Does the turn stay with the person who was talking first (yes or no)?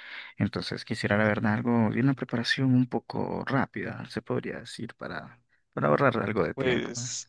no